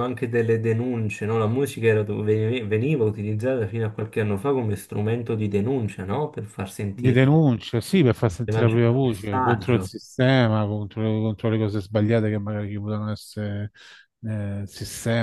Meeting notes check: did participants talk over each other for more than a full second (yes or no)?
yes